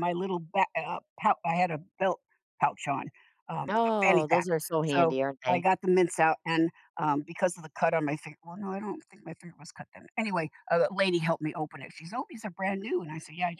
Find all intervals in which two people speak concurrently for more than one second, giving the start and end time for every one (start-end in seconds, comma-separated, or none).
3.7-5.7